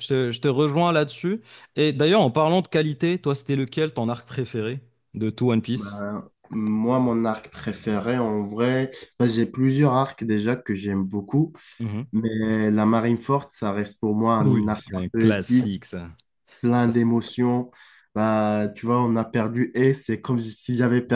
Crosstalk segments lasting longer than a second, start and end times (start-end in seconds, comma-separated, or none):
14.4-15.7